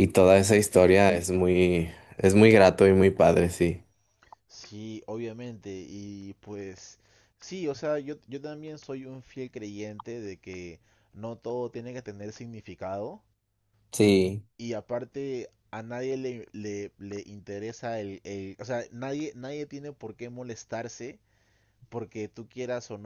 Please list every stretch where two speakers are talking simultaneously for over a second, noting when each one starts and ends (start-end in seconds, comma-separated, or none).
none